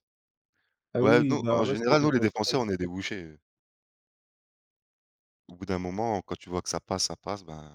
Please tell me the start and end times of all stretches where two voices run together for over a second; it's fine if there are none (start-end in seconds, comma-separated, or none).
1.0-2.6